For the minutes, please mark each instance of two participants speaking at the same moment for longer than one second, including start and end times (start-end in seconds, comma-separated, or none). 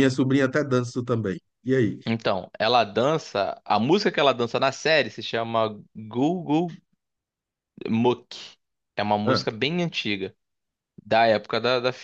none